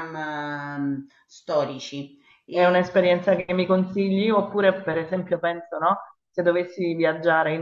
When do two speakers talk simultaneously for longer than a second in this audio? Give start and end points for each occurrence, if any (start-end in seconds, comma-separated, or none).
none